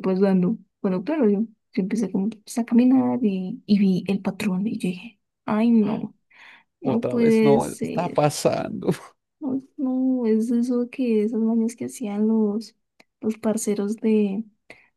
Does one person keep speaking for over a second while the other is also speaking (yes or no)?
yes